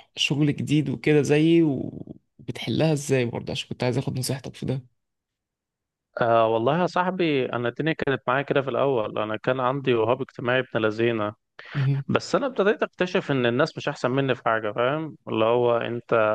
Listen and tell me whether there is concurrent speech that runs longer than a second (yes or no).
no